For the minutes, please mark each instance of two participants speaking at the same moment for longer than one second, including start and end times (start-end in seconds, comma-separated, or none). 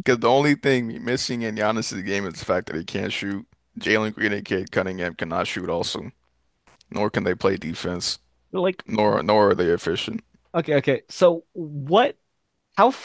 none